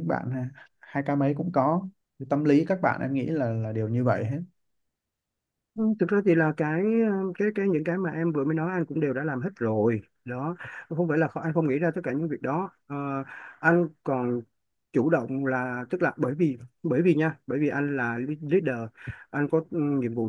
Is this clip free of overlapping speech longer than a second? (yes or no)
yes